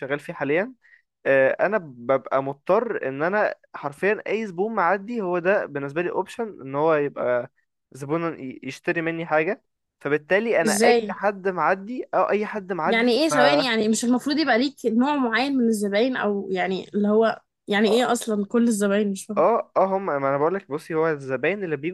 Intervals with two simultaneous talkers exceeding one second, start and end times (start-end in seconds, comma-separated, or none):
none